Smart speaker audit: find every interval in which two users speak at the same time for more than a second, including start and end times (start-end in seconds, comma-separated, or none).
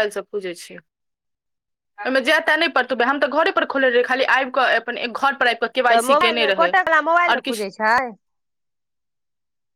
5.9-7.7